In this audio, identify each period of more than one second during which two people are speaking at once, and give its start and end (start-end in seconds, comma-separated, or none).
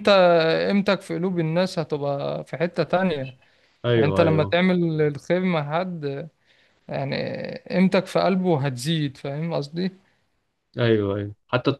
none